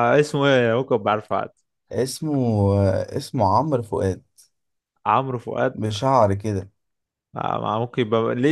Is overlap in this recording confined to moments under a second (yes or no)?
yes